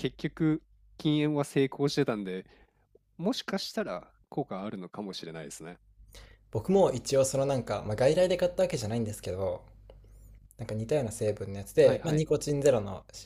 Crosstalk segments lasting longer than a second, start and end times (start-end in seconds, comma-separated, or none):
none